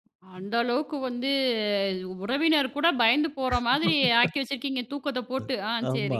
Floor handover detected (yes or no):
yes